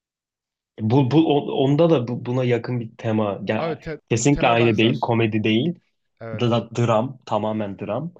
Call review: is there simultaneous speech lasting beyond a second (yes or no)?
yes